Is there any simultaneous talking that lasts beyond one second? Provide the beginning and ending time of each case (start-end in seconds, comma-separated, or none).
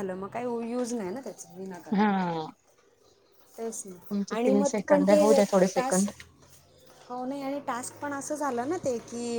4.4-6.0